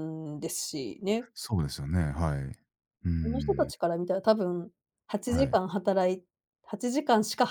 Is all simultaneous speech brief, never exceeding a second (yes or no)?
yes